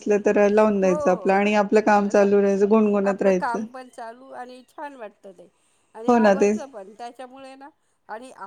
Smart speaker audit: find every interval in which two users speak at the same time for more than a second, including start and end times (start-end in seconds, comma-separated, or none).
none